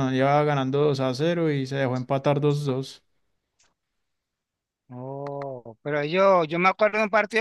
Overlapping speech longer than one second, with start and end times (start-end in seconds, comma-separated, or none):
none